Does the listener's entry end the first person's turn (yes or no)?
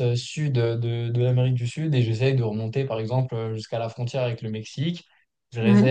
no